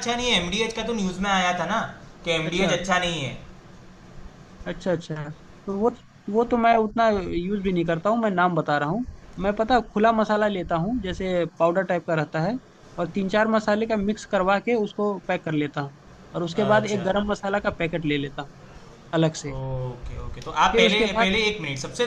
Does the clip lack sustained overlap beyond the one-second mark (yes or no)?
yes